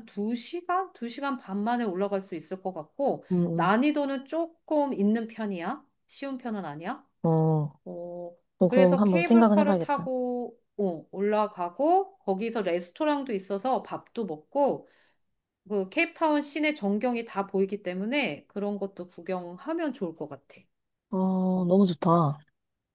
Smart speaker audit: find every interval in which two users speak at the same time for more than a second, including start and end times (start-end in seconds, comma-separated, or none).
8.6-10.1